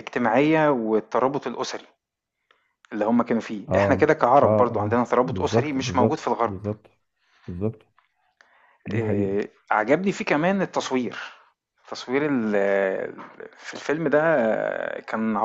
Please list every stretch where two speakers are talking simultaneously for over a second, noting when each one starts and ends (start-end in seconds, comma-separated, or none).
3.7-6.5